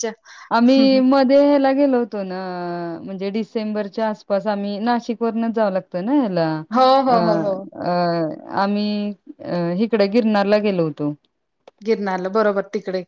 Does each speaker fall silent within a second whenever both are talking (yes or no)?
yes